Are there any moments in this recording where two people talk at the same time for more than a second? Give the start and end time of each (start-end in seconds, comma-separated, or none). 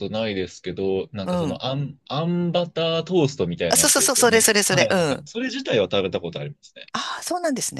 3.7-5.2